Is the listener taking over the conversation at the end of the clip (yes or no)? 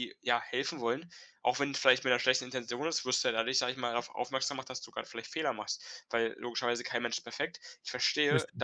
no